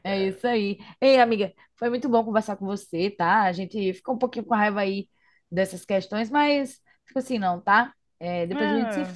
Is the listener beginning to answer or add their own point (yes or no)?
yes